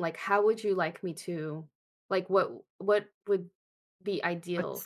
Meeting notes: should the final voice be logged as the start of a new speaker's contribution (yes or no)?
no